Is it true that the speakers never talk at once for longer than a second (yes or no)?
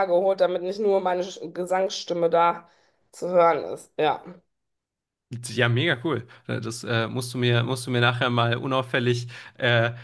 yes